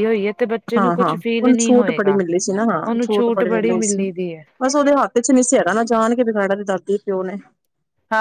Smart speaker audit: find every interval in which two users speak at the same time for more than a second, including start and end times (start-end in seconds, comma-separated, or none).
0.8-2.2